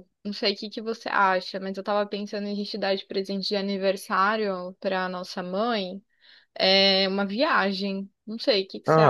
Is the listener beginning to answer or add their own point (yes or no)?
yes